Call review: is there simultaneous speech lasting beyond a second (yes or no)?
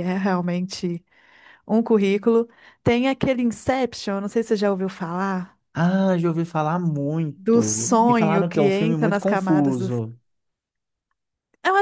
yes